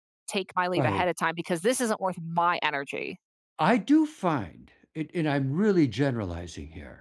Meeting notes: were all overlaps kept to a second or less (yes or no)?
yes